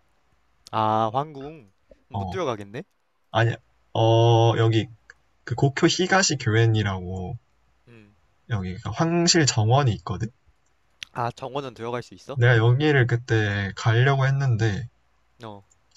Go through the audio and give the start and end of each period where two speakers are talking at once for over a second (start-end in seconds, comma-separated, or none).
none